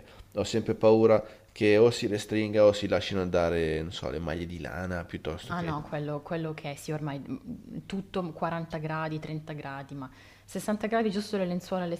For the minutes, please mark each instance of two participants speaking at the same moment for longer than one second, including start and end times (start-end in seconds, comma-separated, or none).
none